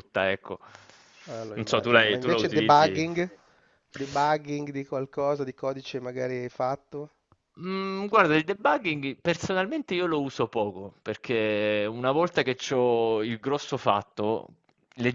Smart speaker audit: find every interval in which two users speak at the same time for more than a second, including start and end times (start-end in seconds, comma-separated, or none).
1.5-3.0